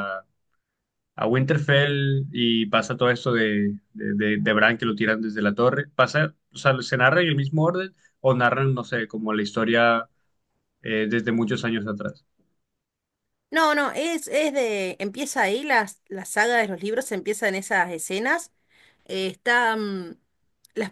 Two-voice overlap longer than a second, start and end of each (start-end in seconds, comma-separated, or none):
none